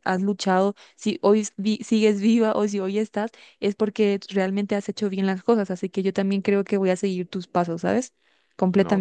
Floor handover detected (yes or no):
yes